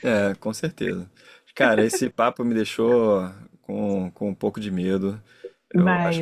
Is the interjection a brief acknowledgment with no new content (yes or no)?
yes